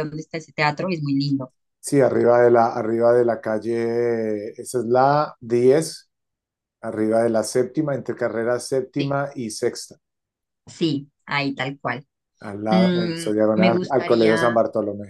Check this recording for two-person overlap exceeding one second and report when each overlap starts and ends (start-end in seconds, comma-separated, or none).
12.7-14.6